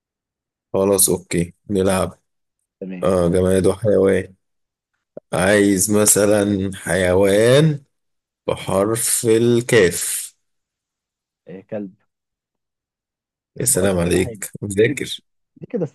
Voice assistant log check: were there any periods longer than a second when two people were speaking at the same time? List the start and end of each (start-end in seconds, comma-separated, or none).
13.7-15.2